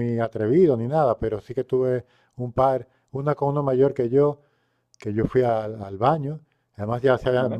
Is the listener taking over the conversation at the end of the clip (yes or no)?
no